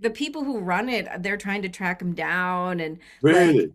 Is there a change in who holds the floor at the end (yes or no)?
no